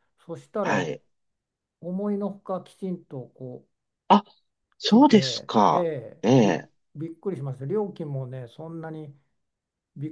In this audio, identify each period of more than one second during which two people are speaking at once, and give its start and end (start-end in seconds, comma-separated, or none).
4.8-6.7